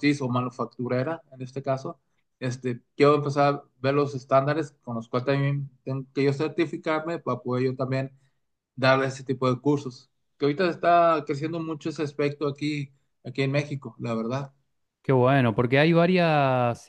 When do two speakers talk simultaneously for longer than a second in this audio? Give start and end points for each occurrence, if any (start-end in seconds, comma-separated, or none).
none